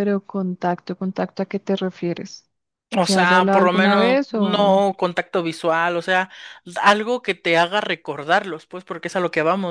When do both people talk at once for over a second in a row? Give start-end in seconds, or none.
3.0-4.8